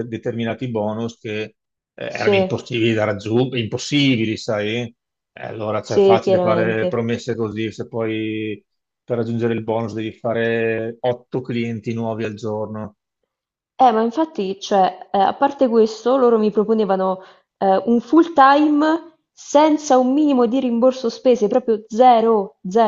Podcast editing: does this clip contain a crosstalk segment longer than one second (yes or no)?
yes